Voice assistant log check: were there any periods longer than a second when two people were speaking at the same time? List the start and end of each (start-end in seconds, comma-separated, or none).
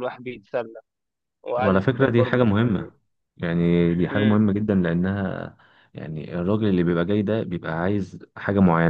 1.6-2.9